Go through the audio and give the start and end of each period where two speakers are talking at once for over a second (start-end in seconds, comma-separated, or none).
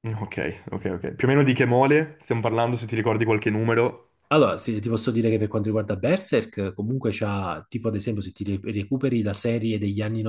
none